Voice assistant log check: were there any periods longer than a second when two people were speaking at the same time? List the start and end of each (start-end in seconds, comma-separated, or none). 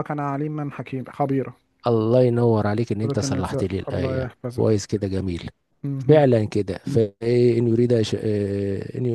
3.0-4.7